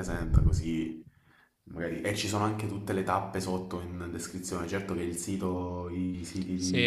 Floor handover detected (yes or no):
yes